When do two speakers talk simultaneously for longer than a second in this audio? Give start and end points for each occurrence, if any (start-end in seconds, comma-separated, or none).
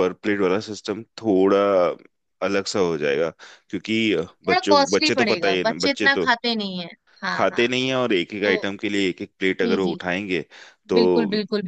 4.5-6.2